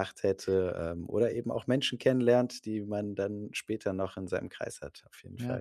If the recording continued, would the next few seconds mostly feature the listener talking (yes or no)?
yes